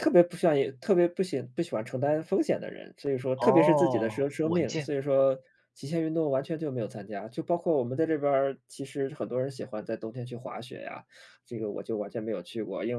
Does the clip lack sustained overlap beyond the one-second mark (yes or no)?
no